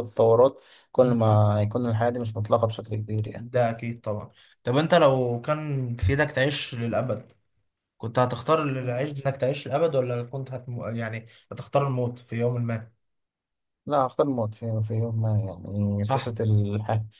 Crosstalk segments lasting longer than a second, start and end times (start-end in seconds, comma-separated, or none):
none